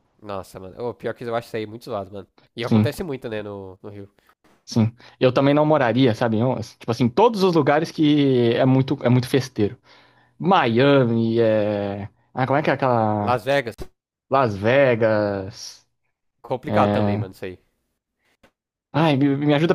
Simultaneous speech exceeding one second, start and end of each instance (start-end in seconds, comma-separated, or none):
none